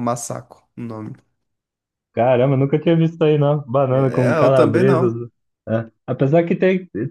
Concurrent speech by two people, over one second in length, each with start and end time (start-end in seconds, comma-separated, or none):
3.9-5.2